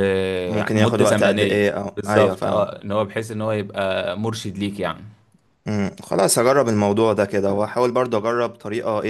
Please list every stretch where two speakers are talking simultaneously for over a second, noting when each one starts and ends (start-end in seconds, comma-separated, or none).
0.7-2.7